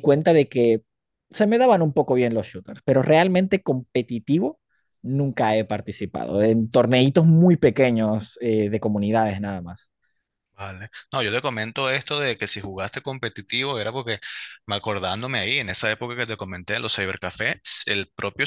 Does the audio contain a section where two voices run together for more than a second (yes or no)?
no